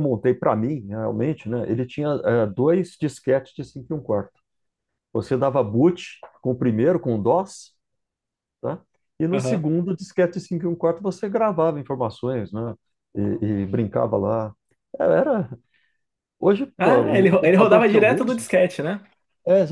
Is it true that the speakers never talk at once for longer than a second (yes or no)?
no